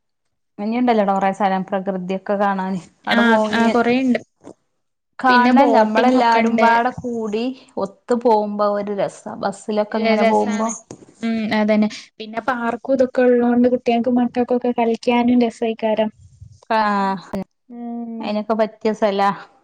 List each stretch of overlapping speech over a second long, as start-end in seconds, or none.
5.3-6.7